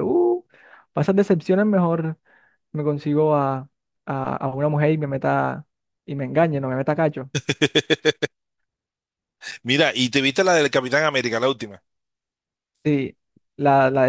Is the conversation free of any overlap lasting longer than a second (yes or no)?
yes